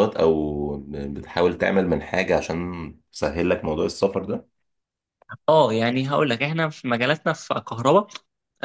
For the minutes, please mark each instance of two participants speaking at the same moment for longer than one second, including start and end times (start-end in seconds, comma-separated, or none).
none